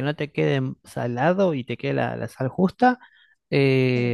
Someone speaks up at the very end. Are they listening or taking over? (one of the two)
listening